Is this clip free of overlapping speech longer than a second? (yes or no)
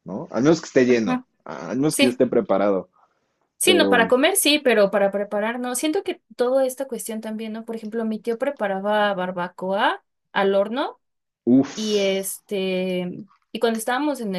yes